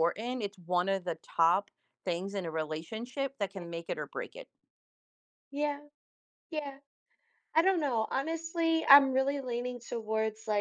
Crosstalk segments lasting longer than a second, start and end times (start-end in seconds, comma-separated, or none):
none